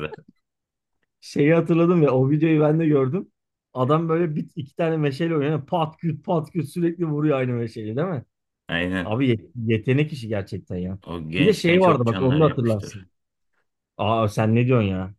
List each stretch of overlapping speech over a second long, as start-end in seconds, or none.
11.4-13.0